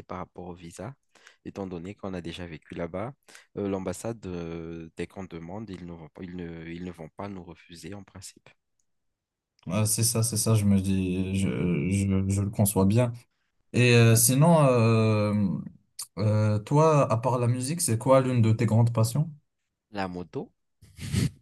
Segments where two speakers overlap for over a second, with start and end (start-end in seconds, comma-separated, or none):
none